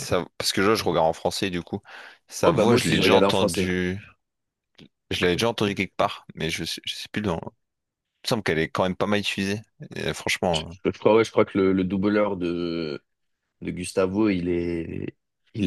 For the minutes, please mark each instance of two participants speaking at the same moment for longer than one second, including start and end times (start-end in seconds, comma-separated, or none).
2.4-3.7